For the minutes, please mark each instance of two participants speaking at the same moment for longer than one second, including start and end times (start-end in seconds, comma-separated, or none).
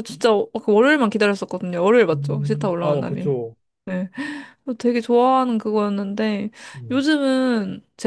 2.1-3.3